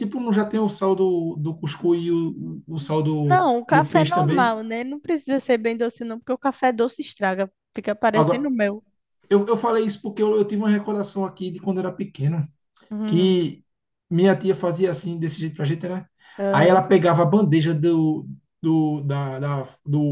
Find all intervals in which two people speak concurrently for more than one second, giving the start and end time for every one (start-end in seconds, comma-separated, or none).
3.3-4.6